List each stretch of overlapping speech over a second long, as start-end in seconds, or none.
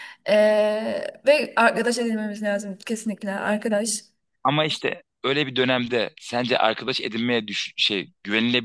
none